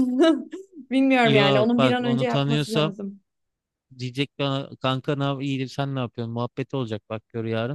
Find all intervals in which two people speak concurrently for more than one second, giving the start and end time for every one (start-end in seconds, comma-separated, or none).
1.2-2.9